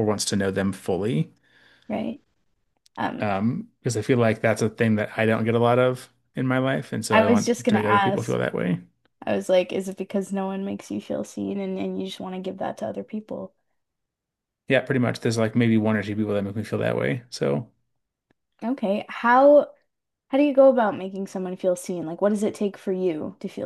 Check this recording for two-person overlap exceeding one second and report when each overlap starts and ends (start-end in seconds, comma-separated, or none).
7.1-8.4